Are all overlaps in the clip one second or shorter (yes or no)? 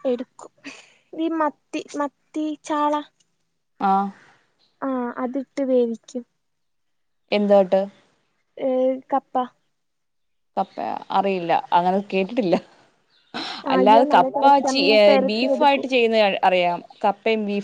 no